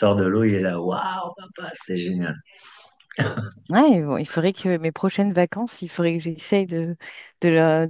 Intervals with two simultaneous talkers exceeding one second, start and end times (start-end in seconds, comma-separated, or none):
none